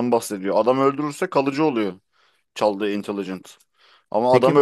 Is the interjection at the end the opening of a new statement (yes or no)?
no